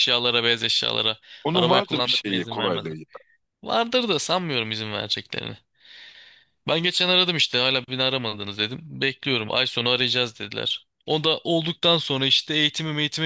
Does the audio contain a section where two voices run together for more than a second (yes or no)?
yes